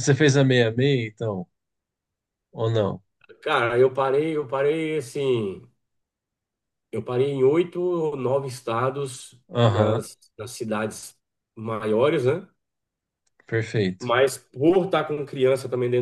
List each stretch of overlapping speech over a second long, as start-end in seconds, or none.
none